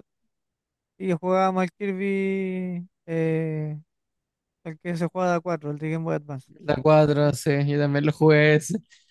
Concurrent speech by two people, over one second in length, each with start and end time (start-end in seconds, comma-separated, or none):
none